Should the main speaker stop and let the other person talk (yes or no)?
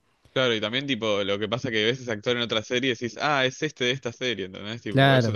yes